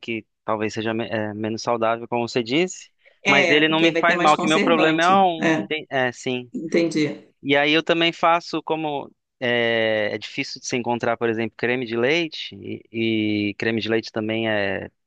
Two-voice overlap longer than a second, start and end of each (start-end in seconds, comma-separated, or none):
3.3-5.7